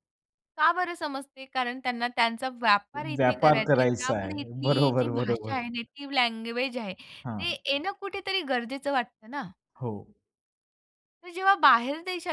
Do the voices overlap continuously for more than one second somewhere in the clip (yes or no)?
yes